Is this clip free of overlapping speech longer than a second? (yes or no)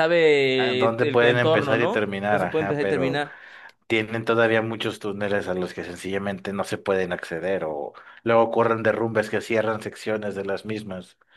no